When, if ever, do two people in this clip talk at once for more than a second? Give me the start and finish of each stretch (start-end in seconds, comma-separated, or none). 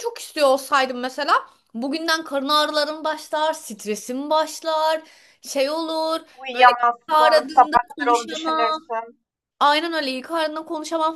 6.4-8.9